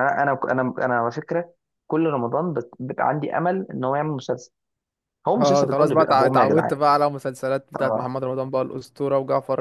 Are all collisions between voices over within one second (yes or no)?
no